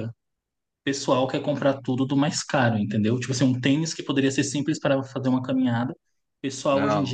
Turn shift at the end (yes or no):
no